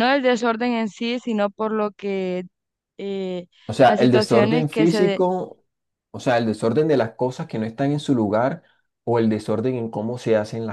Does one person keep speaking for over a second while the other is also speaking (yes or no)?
yes